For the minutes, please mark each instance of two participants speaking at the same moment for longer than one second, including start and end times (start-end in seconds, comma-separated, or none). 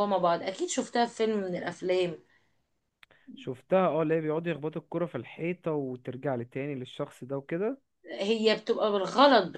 none